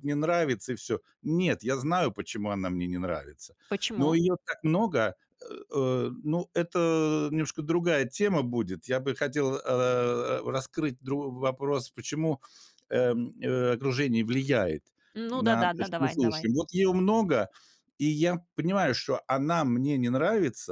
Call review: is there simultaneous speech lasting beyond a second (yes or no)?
yes